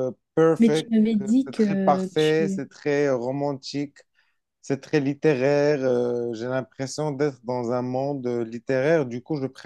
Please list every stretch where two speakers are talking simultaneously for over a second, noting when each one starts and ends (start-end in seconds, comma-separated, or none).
0.6-2.6